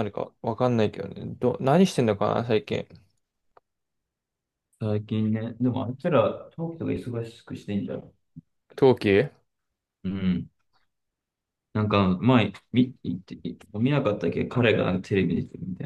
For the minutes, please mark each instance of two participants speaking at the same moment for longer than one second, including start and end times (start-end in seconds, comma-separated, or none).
none